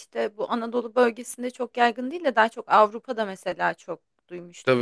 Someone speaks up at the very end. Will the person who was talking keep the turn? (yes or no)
no